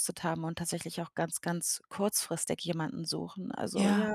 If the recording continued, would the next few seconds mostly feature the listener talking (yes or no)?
no